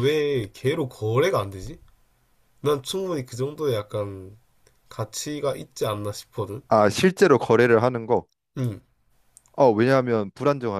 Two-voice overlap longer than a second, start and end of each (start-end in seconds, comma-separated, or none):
none